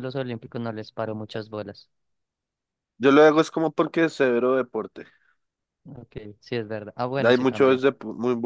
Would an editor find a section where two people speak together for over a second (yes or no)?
no